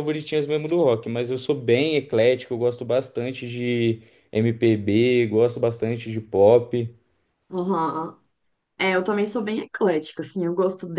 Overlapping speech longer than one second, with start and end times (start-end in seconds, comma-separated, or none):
none